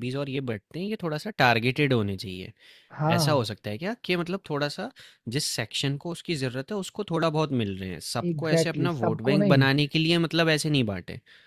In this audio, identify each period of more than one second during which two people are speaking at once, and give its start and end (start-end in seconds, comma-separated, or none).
8.3-9.7